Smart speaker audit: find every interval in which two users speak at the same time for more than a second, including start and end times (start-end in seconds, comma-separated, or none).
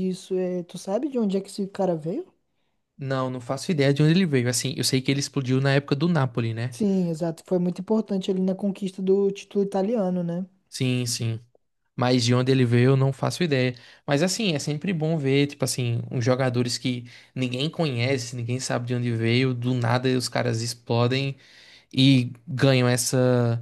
none